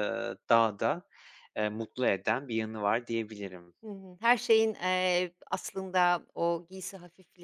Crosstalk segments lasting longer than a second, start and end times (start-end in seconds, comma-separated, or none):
none